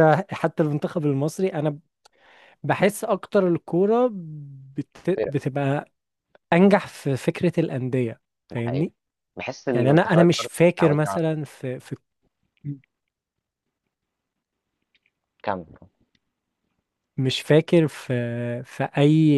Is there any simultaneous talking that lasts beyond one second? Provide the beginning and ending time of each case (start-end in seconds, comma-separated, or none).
9.7-11.2